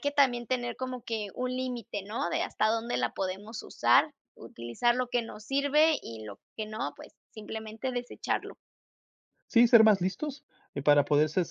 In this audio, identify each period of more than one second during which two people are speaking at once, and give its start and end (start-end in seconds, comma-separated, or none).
none